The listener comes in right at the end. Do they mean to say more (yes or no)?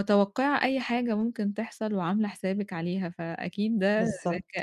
no